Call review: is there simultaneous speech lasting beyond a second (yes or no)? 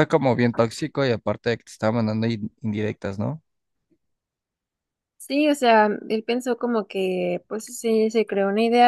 no